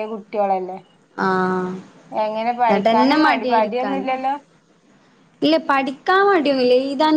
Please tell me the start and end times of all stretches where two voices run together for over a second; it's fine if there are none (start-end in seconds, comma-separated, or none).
2.8-4.1